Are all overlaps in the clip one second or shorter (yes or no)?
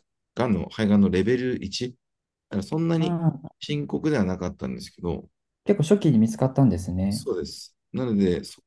yes